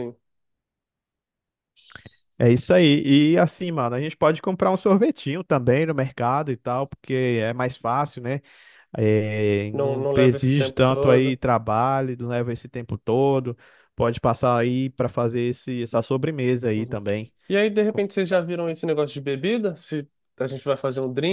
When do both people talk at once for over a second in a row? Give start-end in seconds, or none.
9.7-11.4